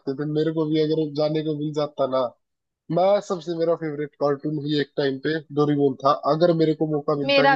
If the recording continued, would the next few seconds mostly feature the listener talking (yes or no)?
no